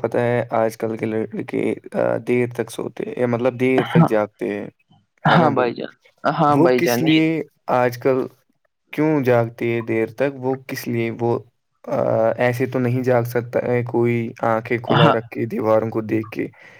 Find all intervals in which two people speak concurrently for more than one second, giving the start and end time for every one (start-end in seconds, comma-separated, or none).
none